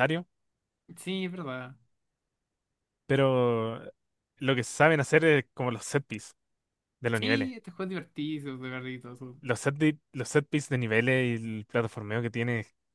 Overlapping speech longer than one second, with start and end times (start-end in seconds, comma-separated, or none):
none